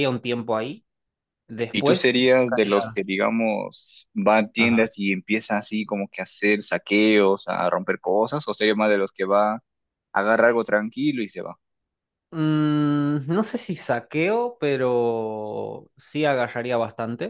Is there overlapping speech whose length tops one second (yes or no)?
yes